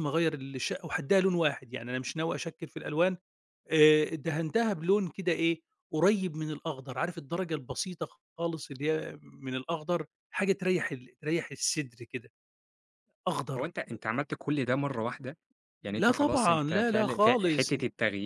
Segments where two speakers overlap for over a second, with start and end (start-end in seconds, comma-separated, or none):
16.0-17.7